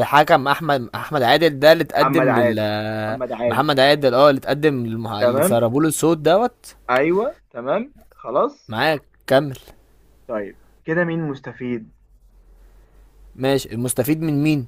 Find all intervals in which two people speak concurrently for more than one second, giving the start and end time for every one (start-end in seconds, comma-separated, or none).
none